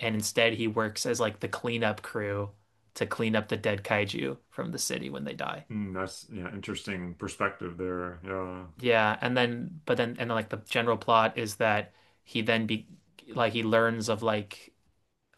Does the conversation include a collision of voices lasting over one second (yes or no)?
no